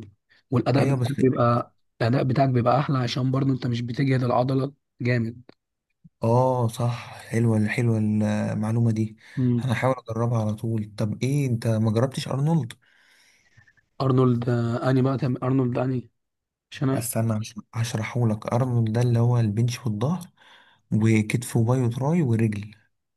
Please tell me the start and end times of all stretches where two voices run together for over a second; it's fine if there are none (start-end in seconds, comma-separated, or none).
none